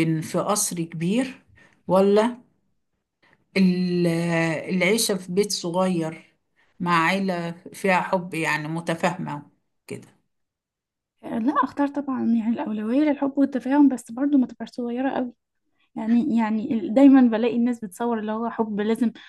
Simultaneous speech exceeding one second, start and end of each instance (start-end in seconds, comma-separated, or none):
none